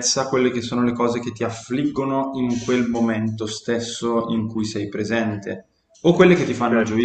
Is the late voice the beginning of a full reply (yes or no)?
no